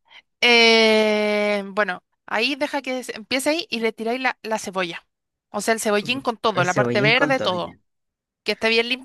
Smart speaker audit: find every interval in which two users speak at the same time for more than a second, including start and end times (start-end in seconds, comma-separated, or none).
6.0-7.8